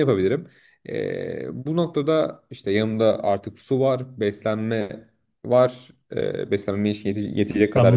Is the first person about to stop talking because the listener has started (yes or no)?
yes